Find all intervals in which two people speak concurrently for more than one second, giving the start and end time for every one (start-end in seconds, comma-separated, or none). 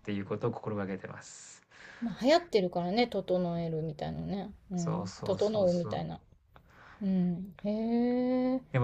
4.8-6.0